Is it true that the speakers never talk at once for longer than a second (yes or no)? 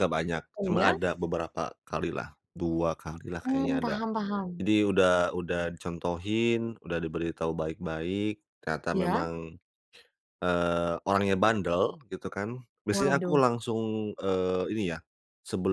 yes